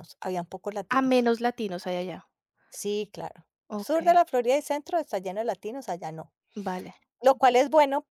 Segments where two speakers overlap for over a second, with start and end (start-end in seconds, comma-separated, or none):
none